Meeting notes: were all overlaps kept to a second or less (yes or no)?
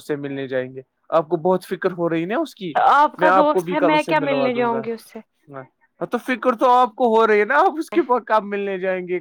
no